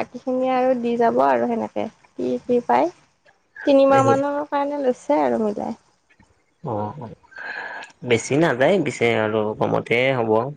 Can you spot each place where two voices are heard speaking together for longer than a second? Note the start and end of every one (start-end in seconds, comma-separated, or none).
none